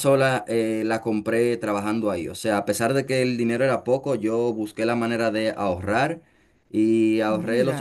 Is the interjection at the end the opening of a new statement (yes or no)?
no